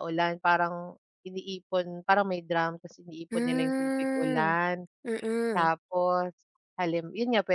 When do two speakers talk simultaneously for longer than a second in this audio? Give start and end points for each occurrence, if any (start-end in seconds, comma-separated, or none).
3.3-4.5